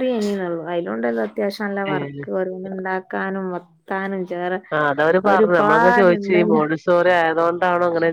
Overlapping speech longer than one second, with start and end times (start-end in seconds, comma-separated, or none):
5.3-6.6